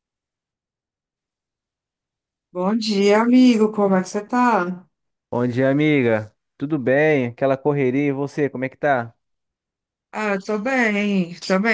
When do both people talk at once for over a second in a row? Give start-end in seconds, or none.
none